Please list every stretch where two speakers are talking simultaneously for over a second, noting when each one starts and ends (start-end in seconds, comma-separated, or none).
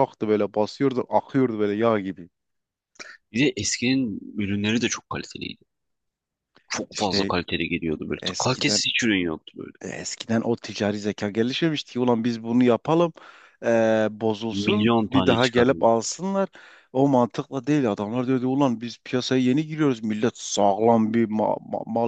14.5-15.9